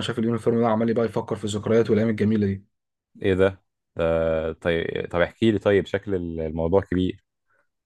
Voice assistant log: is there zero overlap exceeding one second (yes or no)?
yes